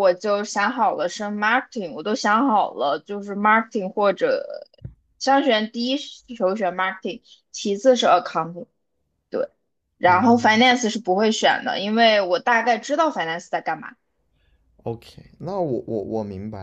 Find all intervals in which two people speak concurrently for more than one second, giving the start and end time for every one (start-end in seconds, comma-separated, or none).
none